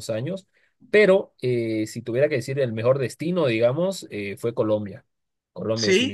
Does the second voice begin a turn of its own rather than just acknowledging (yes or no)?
yes